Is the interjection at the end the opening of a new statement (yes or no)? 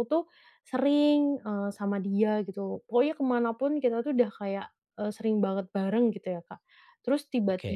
no